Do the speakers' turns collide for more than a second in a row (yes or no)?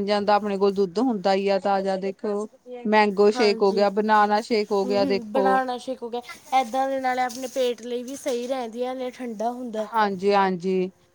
no